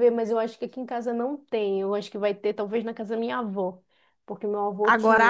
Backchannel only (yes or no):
no